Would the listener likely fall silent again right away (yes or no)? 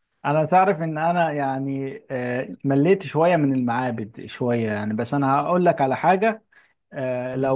yes